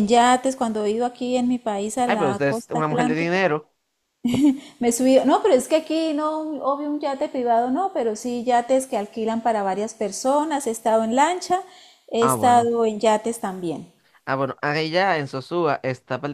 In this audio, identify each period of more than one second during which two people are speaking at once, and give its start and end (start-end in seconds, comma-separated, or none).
2.0-3.4